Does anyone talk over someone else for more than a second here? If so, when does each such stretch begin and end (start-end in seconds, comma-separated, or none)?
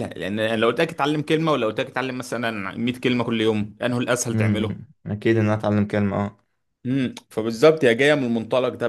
none